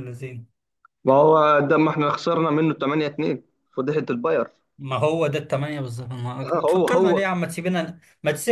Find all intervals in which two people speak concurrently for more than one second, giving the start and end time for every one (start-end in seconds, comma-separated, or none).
none